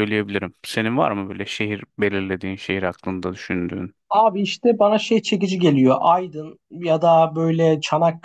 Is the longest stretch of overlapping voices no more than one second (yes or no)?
yes